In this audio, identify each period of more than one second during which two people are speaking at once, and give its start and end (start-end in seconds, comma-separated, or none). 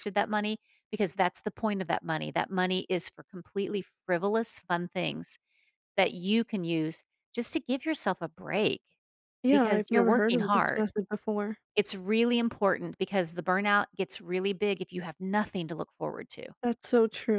9.5-10.9